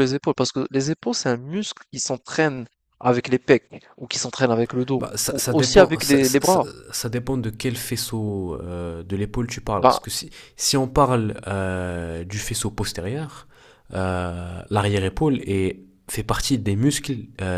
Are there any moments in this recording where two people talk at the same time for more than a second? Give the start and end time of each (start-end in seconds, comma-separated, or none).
5.0-6.7